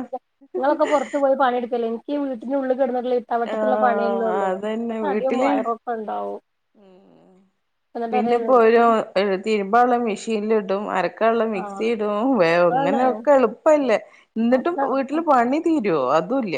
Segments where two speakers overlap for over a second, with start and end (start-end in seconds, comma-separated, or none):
3.5-5.5